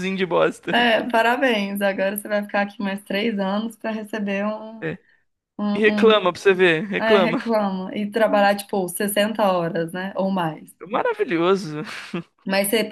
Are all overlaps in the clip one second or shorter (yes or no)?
yes